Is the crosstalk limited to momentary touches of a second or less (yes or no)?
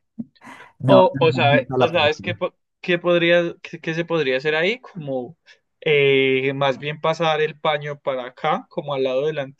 no